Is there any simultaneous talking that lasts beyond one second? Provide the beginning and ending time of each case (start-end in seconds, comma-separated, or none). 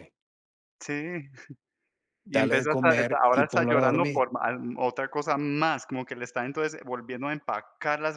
2.3-4.2